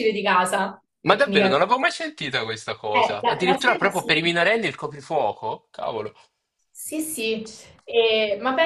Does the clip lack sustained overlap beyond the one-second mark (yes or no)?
no